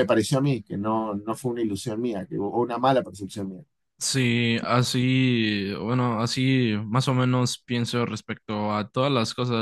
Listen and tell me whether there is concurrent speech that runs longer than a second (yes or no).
no